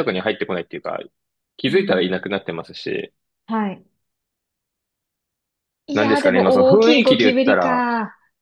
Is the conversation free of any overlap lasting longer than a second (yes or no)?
no